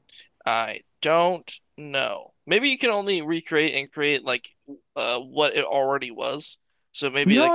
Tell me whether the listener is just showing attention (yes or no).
no